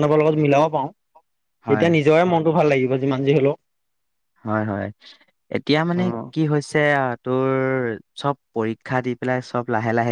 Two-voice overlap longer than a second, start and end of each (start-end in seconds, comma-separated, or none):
none